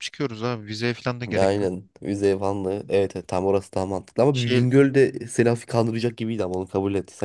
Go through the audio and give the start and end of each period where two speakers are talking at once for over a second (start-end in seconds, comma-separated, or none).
none